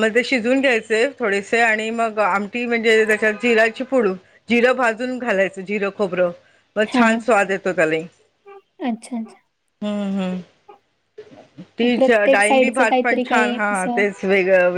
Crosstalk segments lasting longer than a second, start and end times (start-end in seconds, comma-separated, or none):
12.0-14.0